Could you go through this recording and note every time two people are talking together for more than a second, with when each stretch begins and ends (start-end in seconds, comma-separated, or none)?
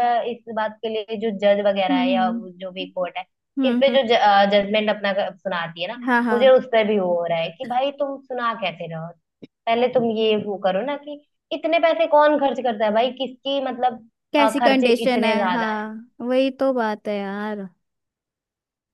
14.3-15.9